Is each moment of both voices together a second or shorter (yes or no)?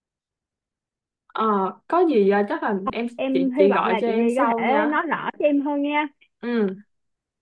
no